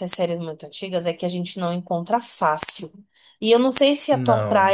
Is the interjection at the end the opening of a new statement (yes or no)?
no